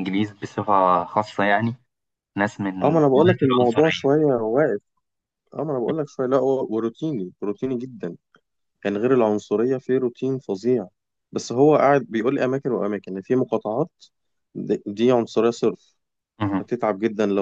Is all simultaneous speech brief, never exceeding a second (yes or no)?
no